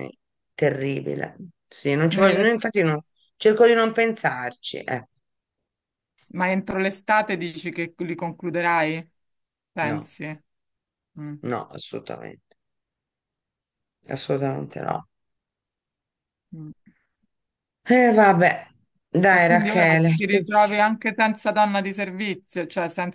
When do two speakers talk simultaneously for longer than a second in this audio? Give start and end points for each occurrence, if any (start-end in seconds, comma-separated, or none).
19.3-20.8